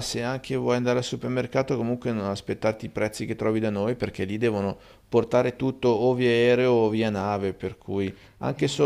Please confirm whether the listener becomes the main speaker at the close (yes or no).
no